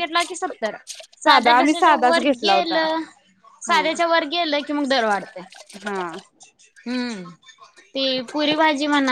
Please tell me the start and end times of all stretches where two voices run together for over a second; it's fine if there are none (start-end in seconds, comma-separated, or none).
1.2-2.8